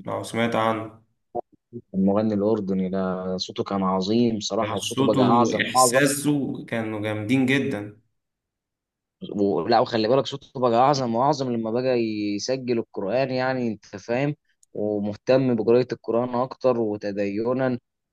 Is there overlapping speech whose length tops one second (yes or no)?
yes